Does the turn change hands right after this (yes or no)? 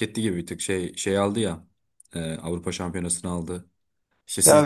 yes